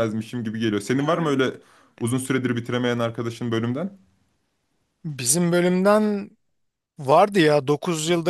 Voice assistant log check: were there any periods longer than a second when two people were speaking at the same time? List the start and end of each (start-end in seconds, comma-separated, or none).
none